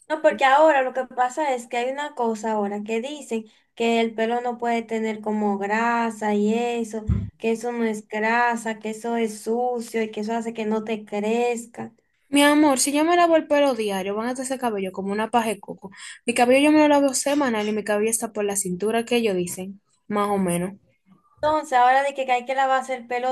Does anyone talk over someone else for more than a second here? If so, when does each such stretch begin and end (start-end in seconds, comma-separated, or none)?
none